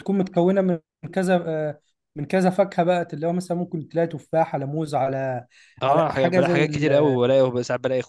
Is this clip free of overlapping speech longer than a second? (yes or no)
no